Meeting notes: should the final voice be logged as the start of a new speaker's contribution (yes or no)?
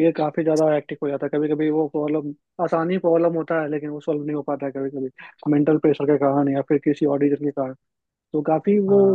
no